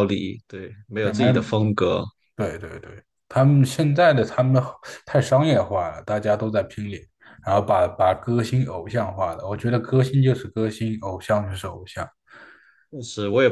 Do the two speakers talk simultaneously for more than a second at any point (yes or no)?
no